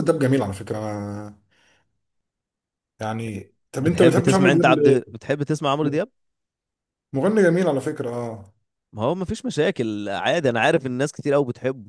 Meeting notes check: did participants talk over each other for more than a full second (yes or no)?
yes